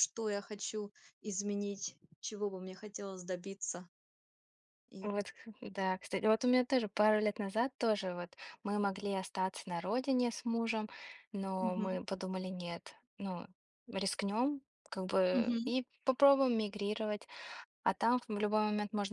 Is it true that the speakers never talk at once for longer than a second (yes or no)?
yes